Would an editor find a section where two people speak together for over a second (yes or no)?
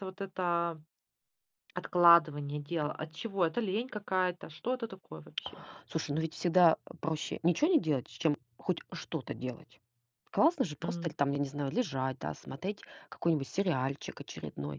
no